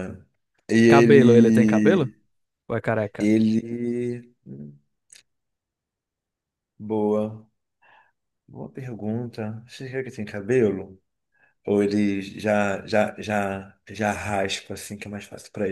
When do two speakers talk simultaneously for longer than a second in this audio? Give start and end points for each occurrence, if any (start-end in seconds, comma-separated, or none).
0.9-2.1